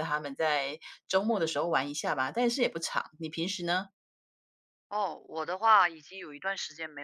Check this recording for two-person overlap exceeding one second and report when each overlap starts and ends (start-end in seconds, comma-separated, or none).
none